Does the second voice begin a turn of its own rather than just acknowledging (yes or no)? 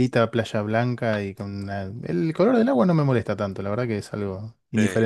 yes